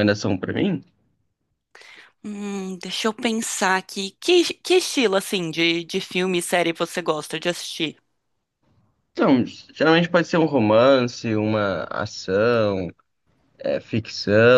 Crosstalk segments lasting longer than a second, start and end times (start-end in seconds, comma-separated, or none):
none